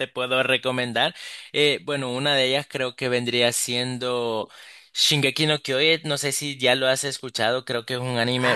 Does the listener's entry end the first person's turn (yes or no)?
yes